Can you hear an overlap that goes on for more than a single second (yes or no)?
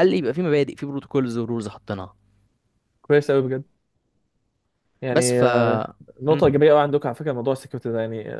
no